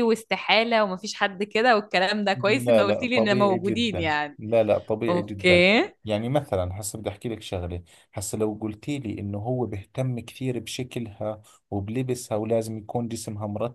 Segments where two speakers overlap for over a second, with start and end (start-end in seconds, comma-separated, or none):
2.4-4.4